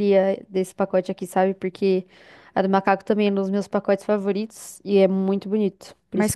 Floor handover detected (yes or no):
yes